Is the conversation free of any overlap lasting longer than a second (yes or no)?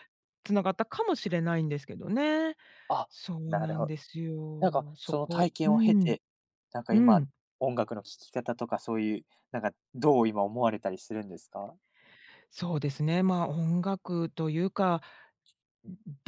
no